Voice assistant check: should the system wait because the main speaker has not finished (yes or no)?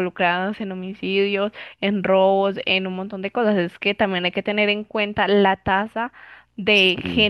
yes